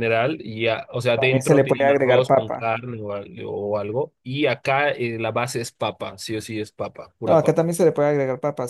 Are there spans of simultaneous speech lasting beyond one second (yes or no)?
yes